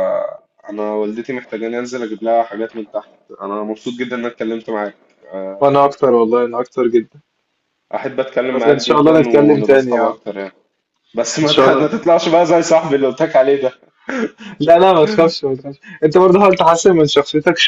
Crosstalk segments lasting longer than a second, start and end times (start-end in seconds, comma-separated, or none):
8.5-10.2